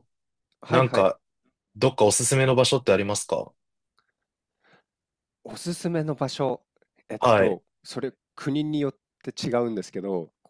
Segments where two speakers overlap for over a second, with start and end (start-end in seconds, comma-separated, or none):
none